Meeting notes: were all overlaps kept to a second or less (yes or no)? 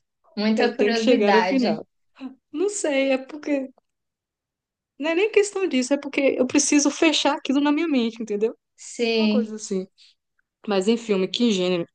no